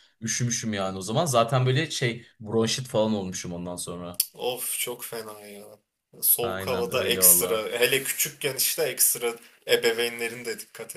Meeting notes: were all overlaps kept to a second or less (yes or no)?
no